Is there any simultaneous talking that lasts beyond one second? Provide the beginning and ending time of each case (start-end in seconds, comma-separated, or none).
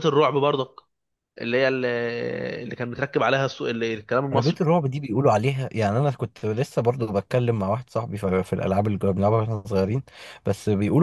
none